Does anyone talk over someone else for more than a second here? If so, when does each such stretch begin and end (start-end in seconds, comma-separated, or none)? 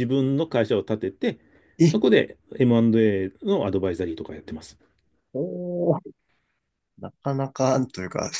none